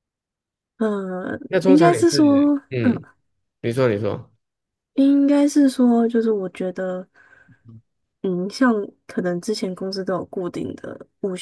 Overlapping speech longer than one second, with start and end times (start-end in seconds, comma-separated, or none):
1.5-3.0